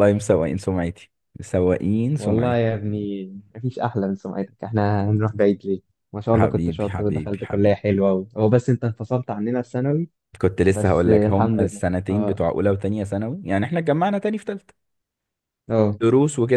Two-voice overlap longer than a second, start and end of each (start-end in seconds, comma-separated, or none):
6.3-7.8, 10.7-12.4